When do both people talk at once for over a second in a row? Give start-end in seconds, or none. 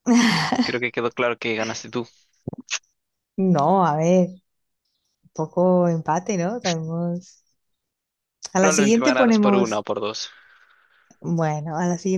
8.6-9.8